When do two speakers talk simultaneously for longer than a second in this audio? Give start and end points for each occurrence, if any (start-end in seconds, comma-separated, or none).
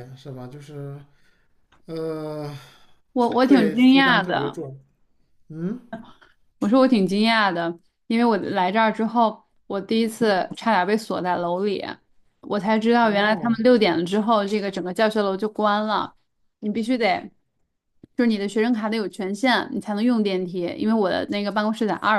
3.4-4.6